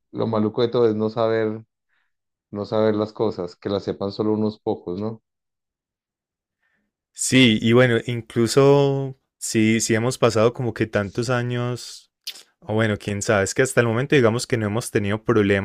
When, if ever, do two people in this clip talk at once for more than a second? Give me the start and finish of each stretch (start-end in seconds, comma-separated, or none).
none